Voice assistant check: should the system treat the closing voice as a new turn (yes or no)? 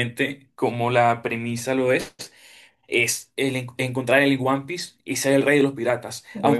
no